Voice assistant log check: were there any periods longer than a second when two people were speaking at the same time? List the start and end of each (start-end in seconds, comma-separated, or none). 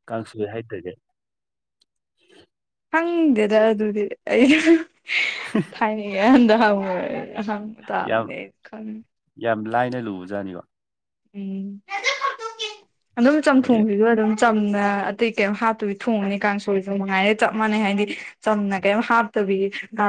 none